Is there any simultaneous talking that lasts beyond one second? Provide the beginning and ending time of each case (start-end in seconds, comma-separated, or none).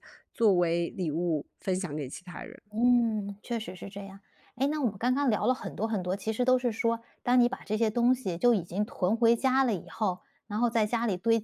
none